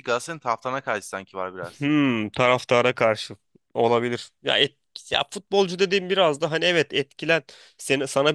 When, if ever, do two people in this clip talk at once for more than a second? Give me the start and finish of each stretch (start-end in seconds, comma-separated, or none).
none